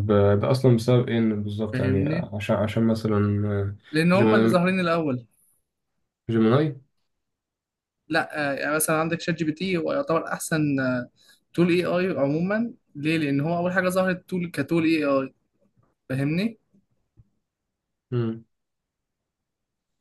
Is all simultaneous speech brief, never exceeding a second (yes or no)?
yes